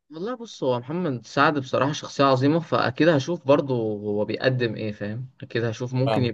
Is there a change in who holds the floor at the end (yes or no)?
no